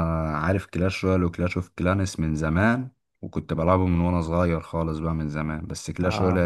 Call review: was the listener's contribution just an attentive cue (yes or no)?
yes